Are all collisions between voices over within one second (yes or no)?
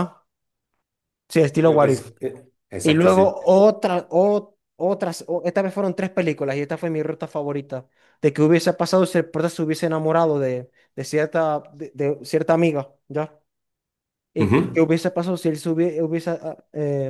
yes